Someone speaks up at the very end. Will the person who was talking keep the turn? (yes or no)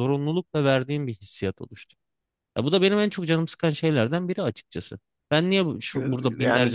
no